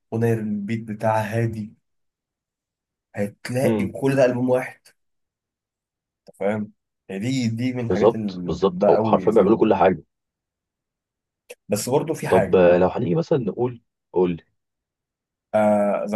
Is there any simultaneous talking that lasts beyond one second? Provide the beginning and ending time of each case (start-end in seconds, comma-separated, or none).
7.9-9.7